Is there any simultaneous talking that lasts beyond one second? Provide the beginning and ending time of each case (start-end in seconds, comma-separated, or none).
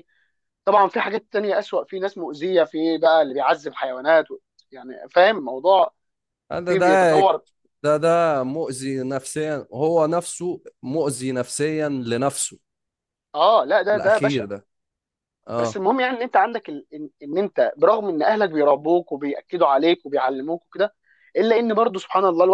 none